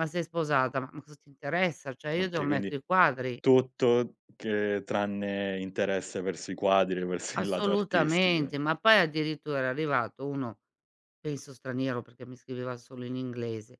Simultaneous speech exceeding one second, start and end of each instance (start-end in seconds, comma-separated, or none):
7.3-8.6